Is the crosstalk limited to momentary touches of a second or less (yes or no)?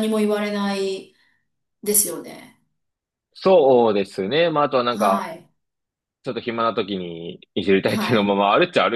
yes